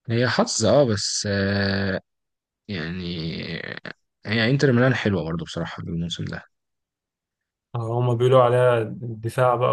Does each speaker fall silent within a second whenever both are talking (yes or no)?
yes